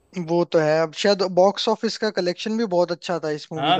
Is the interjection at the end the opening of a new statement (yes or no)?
yes